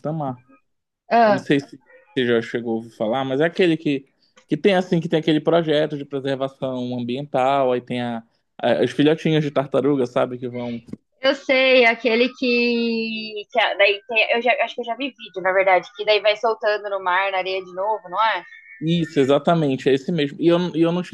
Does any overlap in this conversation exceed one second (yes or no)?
no